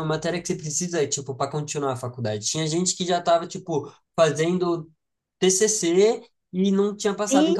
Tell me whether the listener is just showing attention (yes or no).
yes